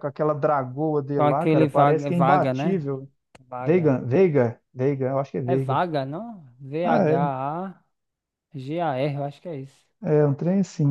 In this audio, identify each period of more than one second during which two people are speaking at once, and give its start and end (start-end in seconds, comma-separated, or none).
1.2-2.9